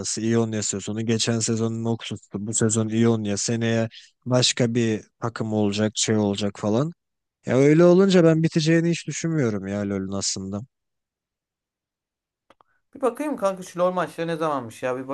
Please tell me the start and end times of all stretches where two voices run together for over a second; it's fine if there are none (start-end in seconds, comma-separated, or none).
none